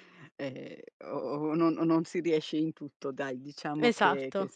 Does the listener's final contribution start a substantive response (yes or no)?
no